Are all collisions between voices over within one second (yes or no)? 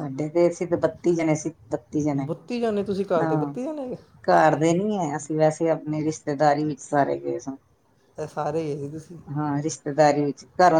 yes